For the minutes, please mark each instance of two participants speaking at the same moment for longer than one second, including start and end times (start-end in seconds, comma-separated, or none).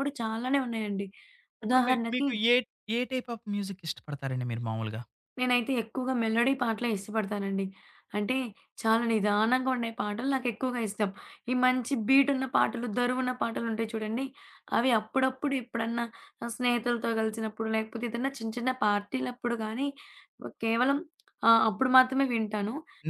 none